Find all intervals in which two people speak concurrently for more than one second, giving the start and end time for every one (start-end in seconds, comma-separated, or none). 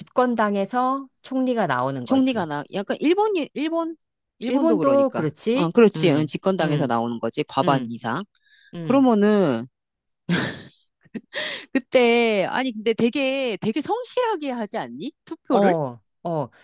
4.5-6.9